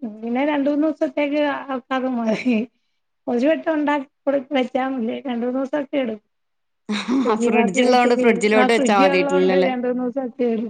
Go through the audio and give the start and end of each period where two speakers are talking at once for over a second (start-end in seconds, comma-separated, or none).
7.2-9.7